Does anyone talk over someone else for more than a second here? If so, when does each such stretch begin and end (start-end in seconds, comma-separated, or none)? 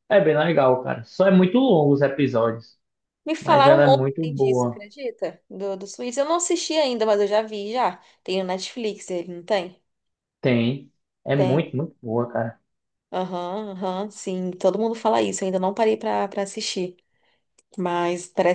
3.4-4.8